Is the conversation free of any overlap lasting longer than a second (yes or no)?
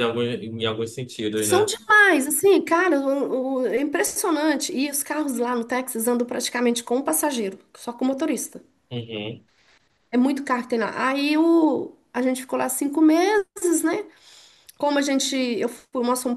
yes